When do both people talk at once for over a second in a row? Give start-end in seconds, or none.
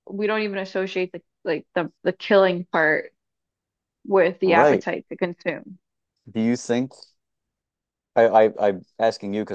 none